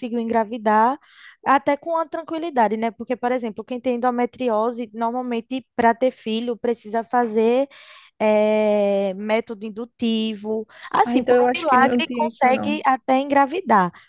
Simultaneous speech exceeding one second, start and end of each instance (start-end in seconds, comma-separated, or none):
11.0-12.8